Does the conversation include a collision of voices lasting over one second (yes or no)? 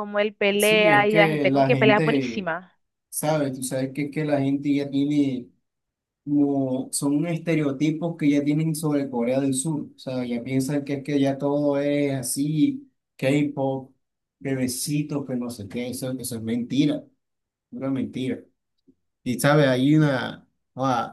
yes